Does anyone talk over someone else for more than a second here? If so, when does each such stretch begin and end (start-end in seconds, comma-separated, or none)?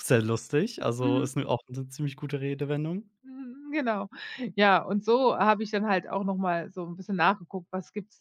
none